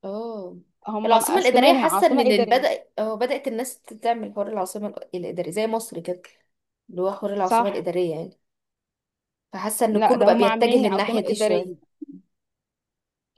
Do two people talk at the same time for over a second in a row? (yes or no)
yes